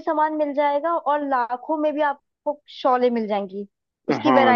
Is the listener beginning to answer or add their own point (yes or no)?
yes